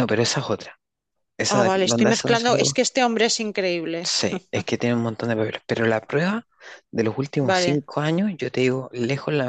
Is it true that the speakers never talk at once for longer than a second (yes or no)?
no